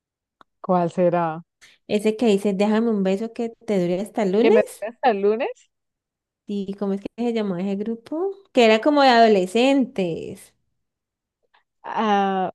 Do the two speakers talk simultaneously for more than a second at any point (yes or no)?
no